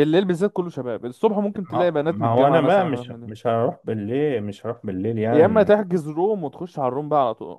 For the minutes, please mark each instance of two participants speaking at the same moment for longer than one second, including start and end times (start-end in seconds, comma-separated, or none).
1.7-3.3